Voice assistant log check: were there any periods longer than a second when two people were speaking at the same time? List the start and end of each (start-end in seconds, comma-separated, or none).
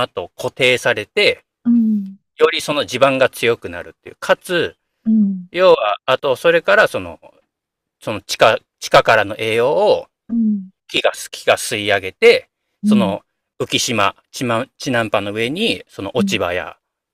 none